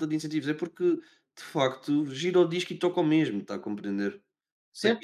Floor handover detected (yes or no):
yes